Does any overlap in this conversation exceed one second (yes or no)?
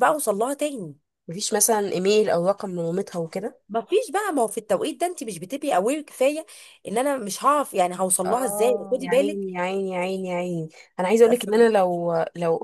yes